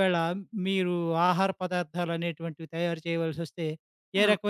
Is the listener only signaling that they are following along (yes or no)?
yes